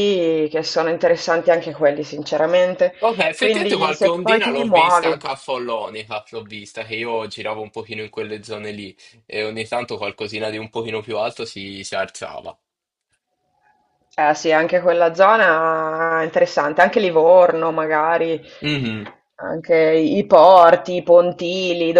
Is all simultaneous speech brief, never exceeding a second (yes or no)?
no